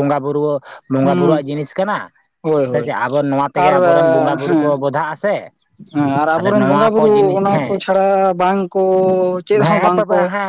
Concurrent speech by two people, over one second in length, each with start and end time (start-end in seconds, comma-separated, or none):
none